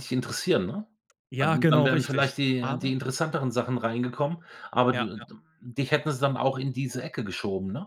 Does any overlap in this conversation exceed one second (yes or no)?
yes